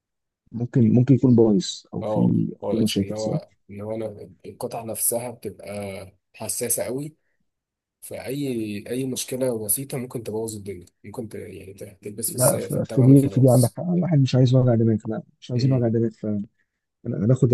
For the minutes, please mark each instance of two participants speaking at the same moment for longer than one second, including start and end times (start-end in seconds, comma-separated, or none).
2.0-3.4, 12.3-13.8